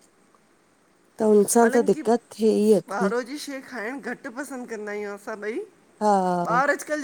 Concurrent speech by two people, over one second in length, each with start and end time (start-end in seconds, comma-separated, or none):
none